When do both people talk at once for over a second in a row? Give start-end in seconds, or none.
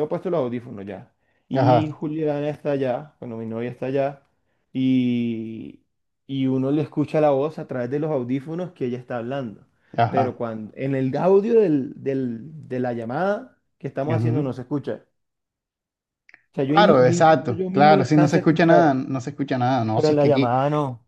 16.6-19.0